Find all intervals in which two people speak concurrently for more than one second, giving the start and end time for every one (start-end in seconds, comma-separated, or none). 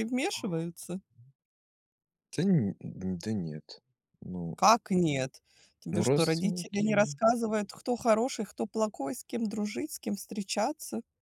5.9-7.1